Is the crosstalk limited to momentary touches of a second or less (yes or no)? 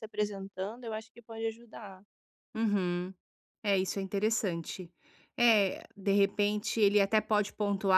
yes